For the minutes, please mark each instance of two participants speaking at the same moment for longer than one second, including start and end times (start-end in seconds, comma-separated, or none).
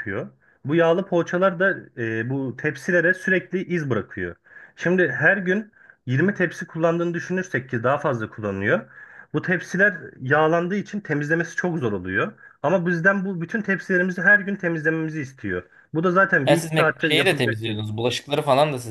16.4-17.8